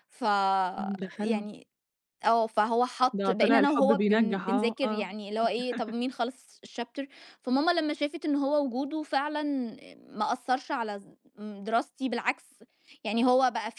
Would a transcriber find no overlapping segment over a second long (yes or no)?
no